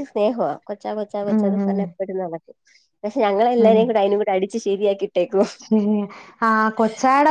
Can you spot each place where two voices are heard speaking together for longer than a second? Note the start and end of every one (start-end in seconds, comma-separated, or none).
none